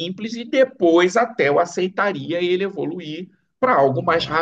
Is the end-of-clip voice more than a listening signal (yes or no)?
no